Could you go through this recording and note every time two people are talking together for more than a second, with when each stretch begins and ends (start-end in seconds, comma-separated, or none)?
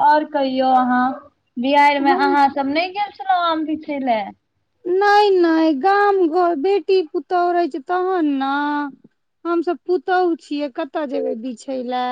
none